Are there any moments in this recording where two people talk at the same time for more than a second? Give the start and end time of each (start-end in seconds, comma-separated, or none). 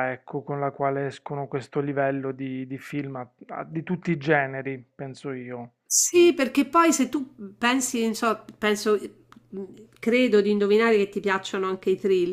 none